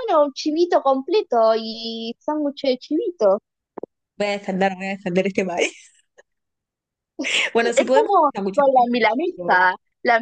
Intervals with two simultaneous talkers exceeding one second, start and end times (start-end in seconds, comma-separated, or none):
7.8-9.7